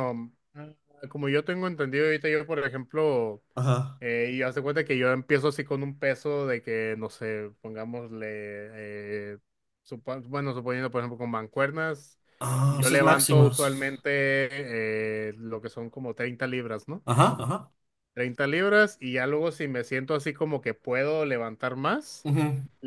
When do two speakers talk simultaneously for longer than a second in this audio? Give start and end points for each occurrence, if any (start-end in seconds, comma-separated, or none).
12.7-14.1